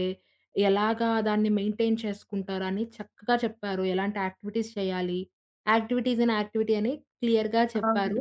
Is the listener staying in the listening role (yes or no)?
yes